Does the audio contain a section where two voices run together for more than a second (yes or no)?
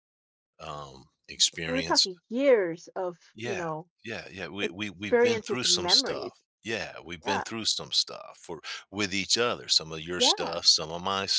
yes